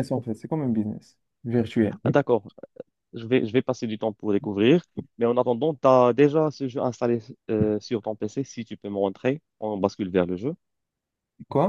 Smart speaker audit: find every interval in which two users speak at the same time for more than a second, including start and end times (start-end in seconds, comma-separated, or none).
none